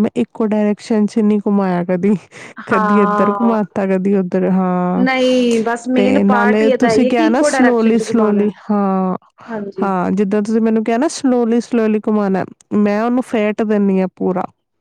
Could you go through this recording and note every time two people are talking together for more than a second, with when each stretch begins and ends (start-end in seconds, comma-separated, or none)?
6.0-8.4